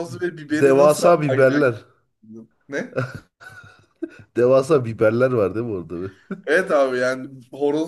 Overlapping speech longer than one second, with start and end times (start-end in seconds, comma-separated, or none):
0.5-1.8